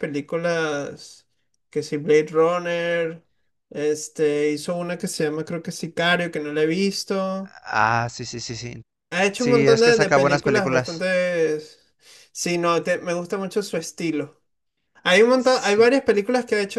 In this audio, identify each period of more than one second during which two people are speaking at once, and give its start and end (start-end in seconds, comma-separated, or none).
9.3-11.1